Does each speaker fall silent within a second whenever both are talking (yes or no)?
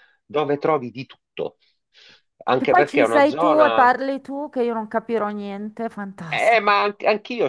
no